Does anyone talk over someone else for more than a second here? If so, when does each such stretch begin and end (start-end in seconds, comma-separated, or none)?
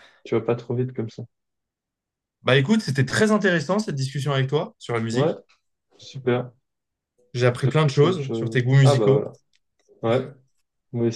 7.6-9.3